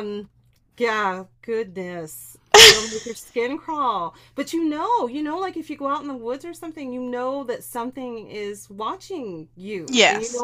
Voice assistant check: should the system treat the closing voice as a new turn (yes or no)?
no